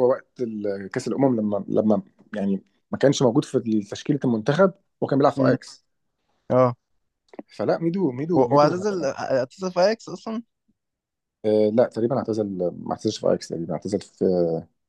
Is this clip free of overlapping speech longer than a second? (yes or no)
yes